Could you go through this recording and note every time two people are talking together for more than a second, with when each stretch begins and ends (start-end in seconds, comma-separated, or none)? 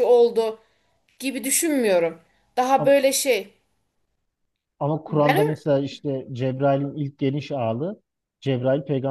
none